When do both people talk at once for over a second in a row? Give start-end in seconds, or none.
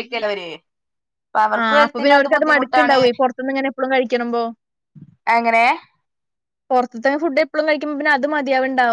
1.6-3.0